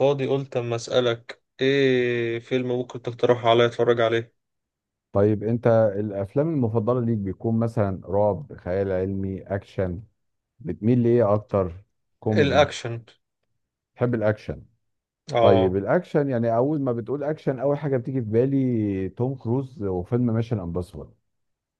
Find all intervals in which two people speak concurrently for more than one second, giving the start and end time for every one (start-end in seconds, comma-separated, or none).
none